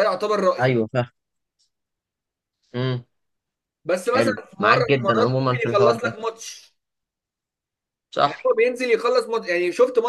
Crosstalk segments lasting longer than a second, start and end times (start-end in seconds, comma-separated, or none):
4.1-6.1